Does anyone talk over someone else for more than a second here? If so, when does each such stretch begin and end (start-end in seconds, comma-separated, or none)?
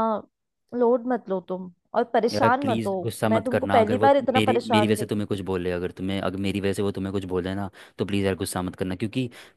2.3-5.3